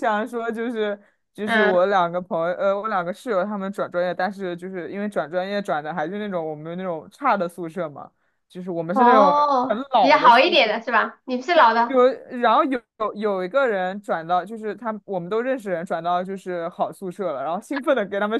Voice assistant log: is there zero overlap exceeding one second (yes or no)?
no